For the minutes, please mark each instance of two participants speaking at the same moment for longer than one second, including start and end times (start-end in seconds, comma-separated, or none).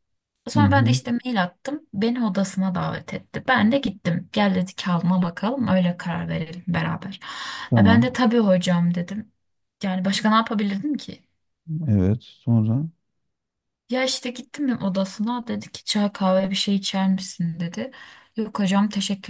none